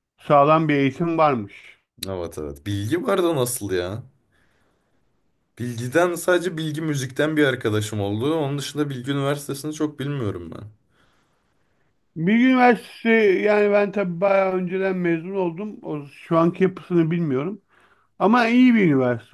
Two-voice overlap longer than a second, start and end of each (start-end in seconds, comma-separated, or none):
none